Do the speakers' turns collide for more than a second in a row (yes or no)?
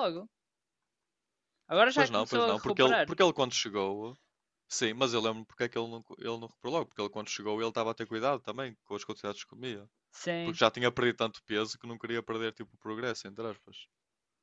yes